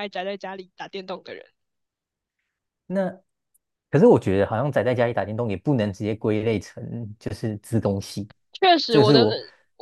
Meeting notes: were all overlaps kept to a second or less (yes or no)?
yes